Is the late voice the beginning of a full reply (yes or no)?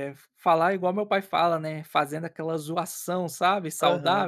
yes